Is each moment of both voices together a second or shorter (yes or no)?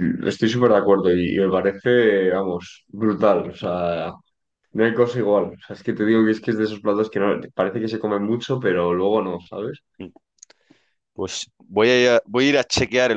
yes